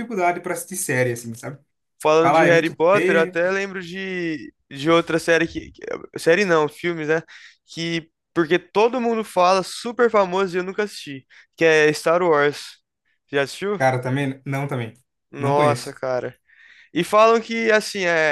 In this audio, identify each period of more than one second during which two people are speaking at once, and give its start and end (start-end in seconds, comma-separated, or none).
2.2-3.4